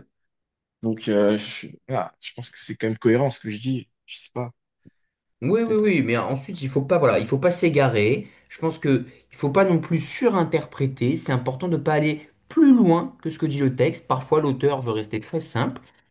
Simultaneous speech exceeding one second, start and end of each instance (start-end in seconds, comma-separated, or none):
none